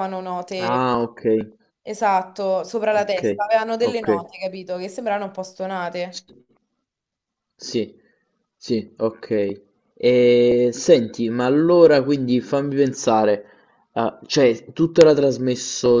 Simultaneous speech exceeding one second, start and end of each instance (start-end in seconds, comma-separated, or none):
none